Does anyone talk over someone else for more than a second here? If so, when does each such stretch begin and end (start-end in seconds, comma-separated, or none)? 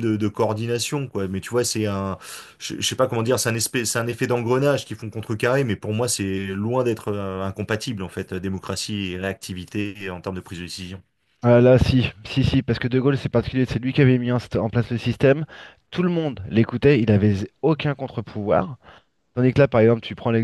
none